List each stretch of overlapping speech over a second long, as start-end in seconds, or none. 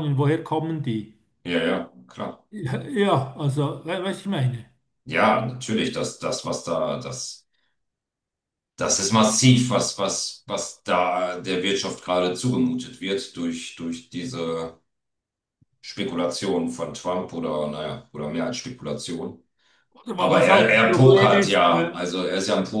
20.2-22.0